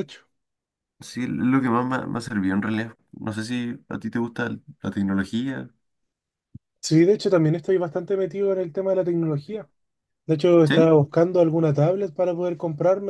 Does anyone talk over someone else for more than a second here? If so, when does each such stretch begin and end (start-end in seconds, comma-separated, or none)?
none